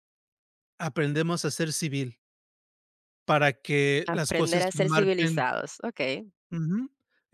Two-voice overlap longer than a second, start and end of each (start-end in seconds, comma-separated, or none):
4.1-5.5